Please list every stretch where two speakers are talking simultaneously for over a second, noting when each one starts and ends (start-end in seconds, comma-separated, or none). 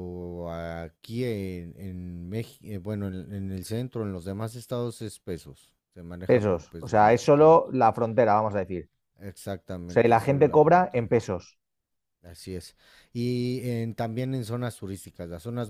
6.2-7.6, 9.9-11.1